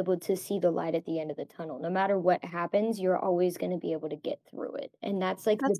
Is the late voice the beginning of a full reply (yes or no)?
no